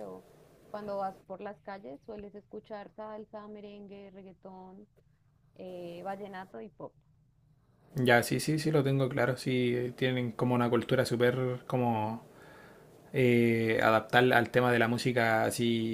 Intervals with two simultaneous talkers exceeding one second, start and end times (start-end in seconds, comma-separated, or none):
none